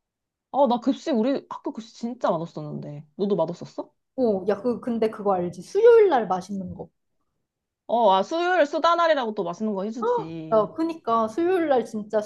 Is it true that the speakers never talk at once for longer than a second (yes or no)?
yes